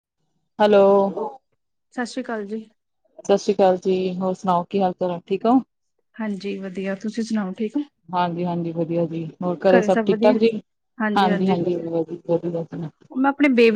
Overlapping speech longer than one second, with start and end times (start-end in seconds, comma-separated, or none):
none